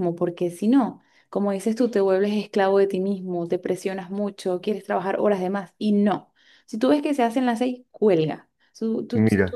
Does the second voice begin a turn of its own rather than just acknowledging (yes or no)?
no